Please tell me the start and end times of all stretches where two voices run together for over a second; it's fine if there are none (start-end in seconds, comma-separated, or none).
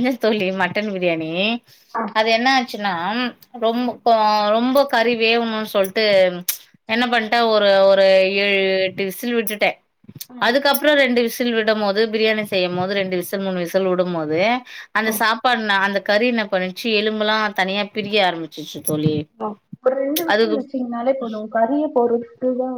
none